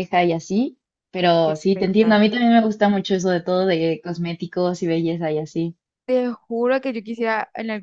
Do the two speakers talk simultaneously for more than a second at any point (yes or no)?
yes